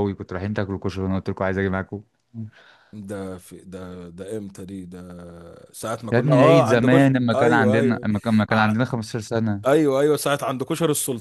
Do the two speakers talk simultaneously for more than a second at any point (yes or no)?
yes